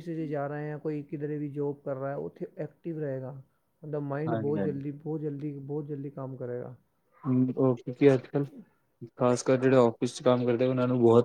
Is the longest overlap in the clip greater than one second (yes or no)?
no